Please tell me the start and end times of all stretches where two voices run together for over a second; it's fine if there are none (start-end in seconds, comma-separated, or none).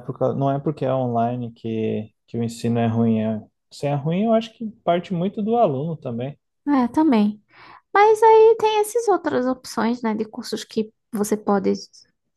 none